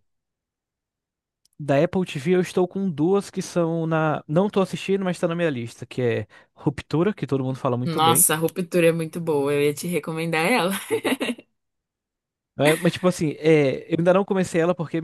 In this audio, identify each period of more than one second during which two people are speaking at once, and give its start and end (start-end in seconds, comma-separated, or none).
none